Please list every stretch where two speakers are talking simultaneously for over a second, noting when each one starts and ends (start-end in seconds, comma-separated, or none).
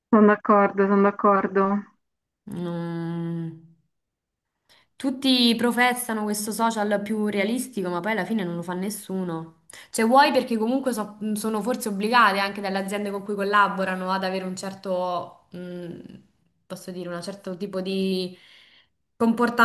none